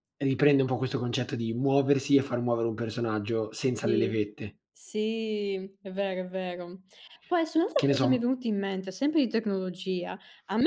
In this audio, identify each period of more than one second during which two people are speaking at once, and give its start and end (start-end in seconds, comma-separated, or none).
none